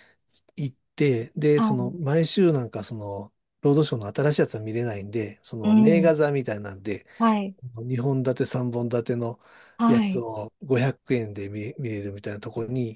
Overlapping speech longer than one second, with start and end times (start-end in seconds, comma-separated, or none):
none